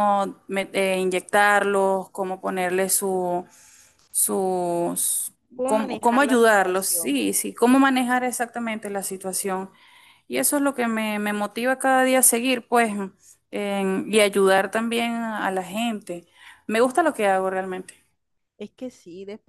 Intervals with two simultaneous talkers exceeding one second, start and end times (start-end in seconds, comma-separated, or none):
5.5-7.2